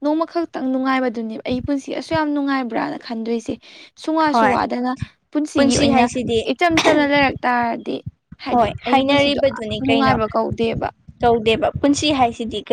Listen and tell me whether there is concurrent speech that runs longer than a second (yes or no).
yes